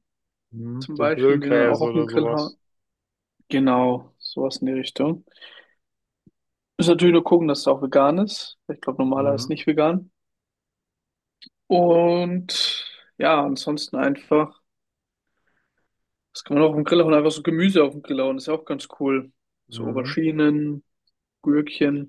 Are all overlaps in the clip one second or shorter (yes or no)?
no